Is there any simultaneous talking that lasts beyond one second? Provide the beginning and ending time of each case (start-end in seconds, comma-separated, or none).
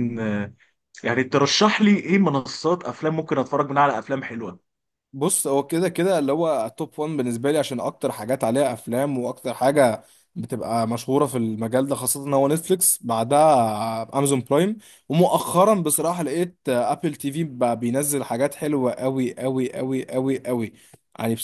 none